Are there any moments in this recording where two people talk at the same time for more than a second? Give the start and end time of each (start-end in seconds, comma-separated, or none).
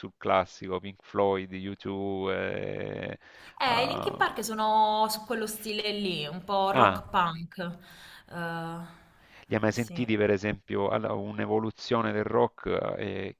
none